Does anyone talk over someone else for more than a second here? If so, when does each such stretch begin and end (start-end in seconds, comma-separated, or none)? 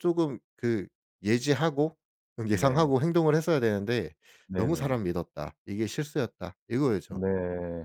none